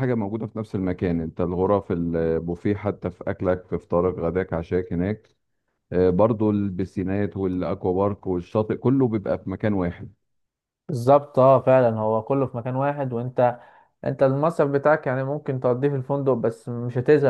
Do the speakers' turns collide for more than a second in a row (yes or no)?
no